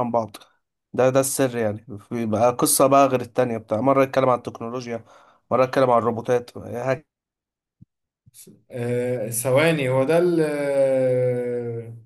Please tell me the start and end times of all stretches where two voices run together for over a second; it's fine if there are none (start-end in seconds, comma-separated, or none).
none